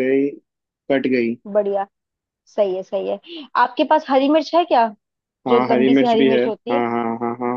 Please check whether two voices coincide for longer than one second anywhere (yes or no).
yes